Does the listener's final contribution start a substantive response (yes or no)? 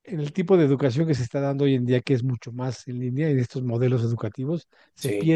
no